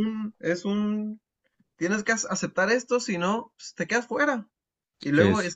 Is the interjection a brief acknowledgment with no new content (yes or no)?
yes